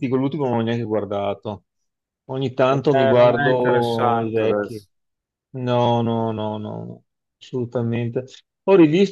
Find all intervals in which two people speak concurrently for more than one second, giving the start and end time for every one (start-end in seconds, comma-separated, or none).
2.7-4.8